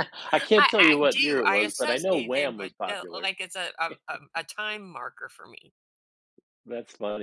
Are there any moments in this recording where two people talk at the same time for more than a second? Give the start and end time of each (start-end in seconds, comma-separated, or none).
0.6-3.3